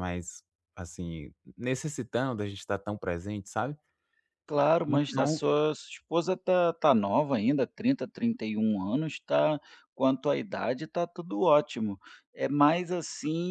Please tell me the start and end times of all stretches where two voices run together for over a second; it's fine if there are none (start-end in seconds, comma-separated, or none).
none